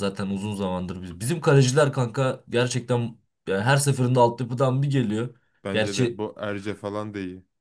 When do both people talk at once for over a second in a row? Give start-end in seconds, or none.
none